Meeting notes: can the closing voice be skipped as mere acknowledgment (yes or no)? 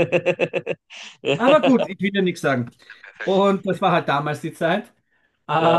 yes